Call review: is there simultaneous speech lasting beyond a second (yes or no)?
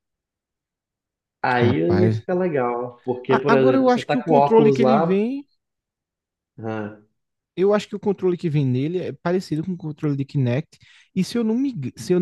yes